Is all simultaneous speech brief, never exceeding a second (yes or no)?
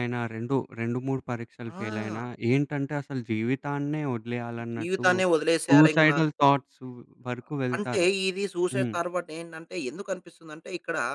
yes